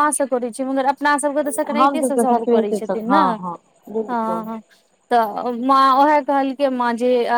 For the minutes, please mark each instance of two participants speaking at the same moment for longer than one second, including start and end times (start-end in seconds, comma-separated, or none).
1.5-3.4